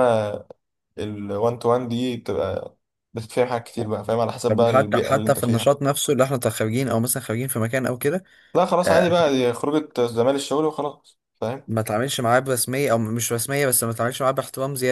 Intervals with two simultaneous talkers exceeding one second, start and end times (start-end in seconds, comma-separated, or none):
4.5-5.7